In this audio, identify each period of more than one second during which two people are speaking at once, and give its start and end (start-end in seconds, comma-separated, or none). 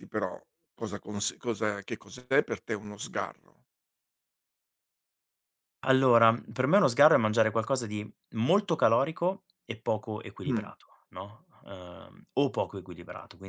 none